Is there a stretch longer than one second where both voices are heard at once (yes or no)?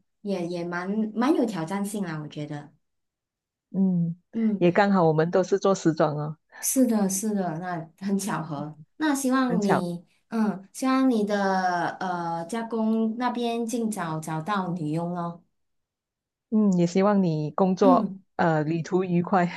no